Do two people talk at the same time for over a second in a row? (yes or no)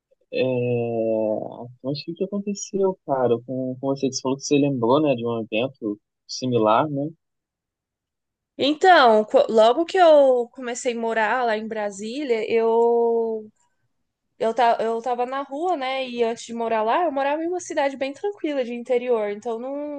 no